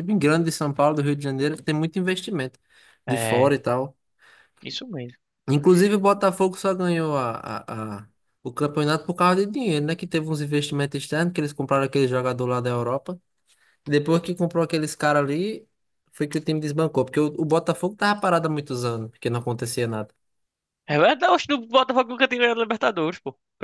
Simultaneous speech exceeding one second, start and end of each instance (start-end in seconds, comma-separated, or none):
none